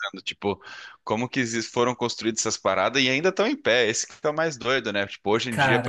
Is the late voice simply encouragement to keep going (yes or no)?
yes